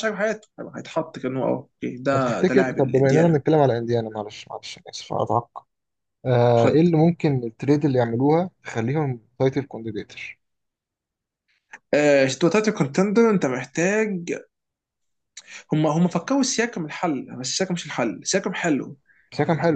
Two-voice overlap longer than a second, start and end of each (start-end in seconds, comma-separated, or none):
2.1-3.4